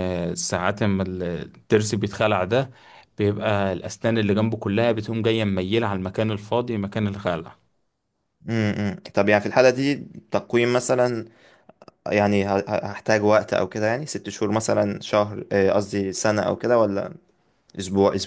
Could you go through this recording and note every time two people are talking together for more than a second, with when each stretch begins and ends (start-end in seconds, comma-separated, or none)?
none